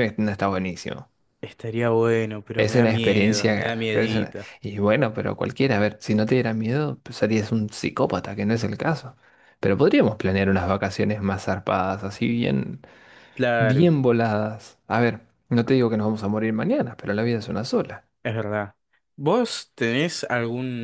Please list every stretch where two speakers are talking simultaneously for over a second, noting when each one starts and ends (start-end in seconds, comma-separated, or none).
2.5-4.5